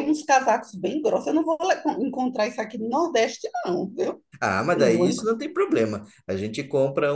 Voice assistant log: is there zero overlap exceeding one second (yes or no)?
yes